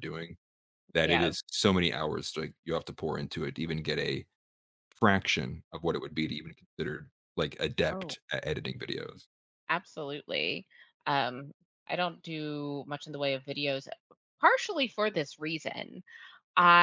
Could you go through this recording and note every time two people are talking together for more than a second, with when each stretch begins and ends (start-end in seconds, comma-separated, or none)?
none